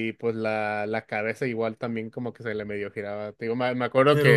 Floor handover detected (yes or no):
no